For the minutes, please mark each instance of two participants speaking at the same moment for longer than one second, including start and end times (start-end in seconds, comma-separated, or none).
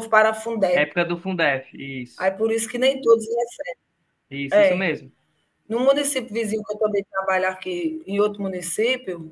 none